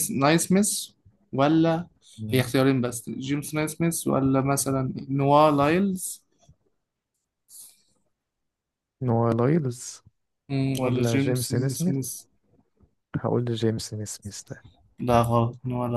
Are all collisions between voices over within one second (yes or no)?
no